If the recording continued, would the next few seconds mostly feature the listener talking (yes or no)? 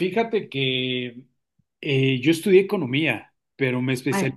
no